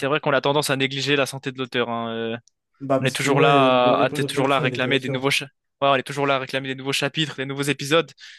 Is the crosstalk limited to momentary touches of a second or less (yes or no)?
no